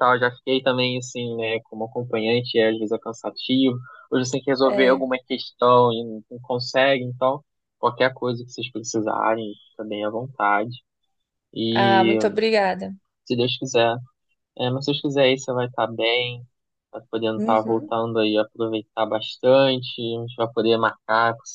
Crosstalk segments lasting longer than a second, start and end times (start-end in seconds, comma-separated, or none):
none